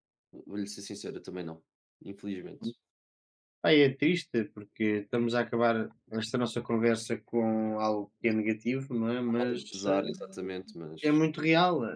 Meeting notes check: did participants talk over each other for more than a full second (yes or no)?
yes